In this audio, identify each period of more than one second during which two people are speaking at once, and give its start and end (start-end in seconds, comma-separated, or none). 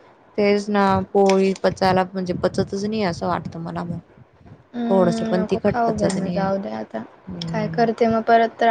4.9-6.5